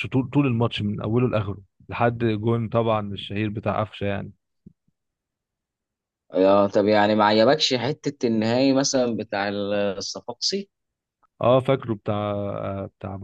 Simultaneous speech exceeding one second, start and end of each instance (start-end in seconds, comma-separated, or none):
none